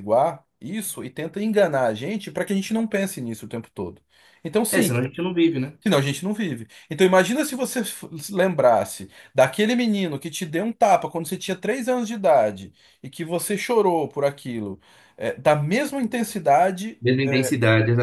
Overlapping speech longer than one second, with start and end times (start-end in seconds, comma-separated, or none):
none